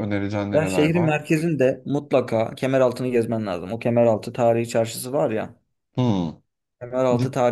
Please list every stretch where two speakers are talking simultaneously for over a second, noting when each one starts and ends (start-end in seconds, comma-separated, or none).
none